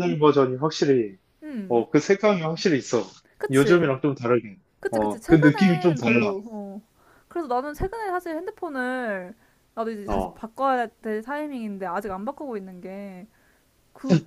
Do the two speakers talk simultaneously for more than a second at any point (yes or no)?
yes